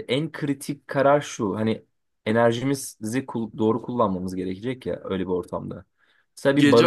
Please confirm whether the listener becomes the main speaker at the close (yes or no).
yes